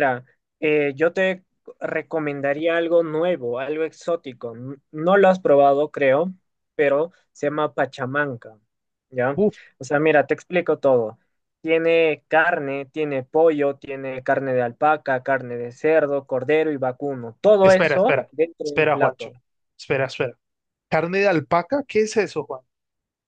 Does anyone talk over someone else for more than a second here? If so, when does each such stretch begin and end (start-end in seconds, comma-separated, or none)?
17.6-19.3